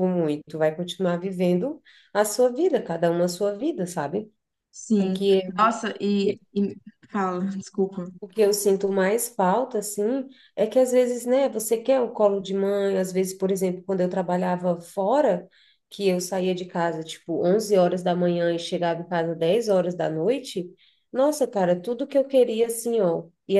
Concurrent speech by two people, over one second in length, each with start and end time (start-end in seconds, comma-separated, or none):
none